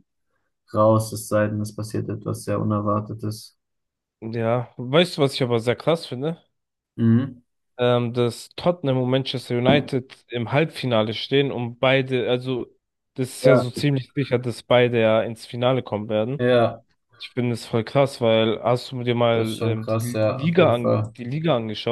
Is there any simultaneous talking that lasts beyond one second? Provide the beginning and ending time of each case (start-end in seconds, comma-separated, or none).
19.3-21.1